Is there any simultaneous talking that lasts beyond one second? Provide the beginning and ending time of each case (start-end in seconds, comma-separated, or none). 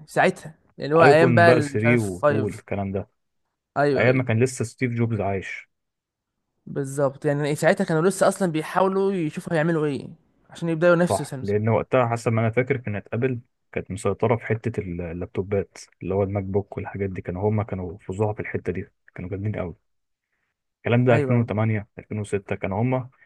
1.0-2.6